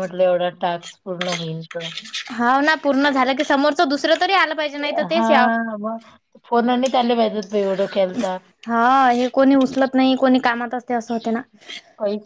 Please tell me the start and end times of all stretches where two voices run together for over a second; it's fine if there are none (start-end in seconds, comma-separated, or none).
none